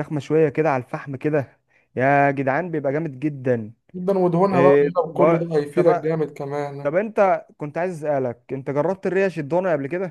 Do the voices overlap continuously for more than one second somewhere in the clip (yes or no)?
yes